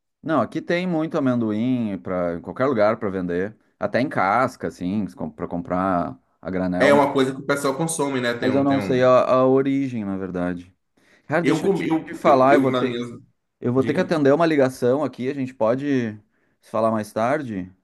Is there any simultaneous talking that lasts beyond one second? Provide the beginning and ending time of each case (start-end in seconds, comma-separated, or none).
11.4-13.0